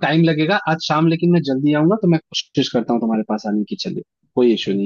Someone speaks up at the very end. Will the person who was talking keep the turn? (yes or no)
no